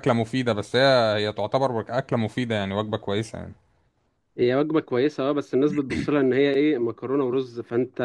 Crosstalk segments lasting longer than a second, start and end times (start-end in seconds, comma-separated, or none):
none